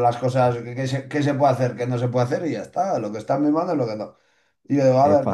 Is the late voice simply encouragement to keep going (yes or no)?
yes